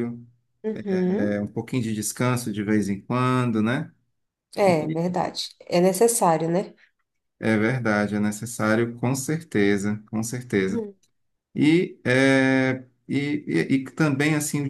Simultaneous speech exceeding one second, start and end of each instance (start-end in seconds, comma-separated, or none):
none